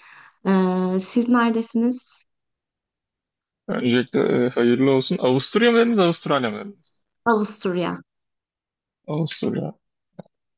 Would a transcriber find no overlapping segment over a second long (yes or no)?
yes